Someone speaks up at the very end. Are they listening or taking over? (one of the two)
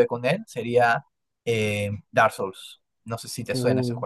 taking over